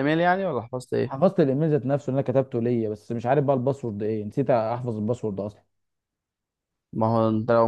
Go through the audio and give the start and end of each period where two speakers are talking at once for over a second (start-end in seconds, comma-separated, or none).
none